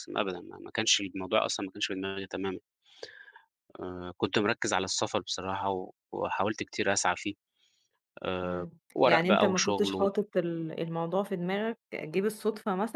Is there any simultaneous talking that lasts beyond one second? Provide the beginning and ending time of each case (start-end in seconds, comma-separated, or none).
8.4-10.1